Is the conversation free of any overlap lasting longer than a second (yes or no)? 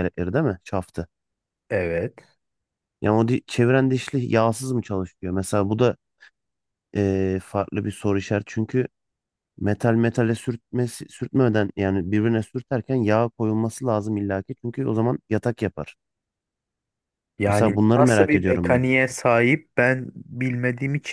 no